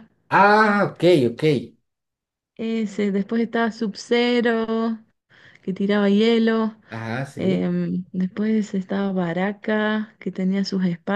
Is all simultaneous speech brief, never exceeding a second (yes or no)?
yes